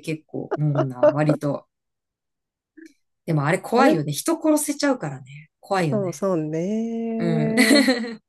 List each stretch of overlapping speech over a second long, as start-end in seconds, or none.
none